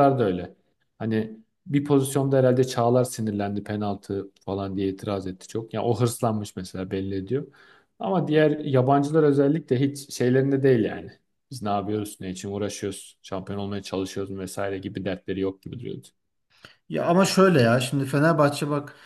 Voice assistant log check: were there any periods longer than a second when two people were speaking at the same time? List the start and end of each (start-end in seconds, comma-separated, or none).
none